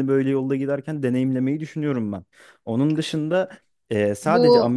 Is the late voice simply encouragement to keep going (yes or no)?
yes